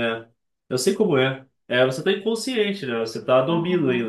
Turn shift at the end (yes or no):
no